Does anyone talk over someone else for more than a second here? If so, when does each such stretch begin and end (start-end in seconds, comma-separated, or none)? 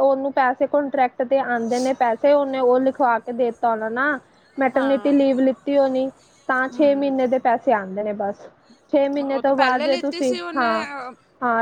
9.3-10.7